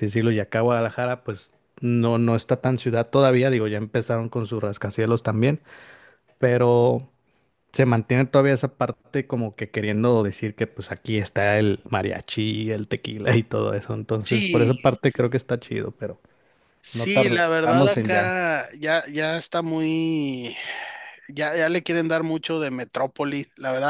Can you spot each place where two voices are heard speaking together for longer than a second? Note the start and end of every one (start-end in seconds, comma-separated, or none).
16.9-18.3